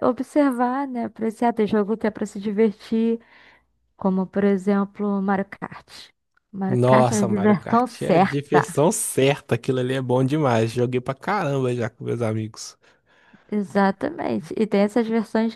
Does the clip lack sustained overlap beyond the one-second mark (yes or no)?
no